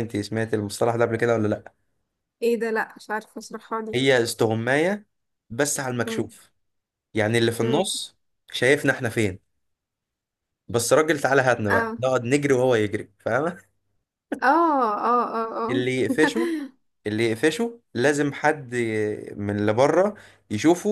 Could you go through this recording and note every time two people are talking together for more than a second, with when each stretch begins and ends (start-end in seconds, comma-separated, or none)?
none